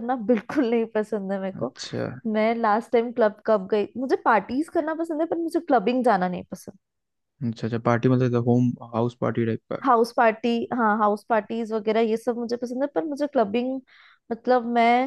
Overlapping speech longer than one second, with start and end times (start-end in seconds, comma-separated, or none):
none